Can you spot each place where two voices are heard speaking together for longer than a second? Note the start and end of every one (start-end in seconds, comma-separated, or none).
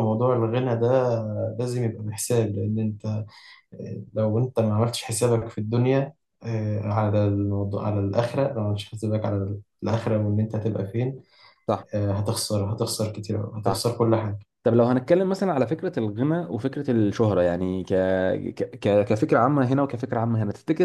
none